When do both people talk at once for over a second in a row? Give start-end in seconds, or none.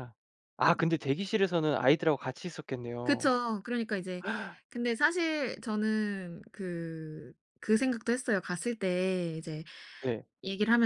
none